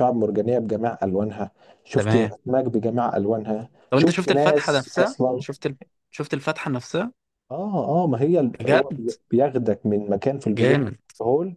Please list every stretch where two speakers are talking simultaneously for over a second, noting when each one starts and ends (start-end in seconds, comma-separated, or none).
3.9-5.4